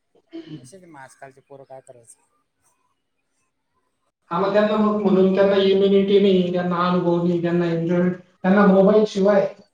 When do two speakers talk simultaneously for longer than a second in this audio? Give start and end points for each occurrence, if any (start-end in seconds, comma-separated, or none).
none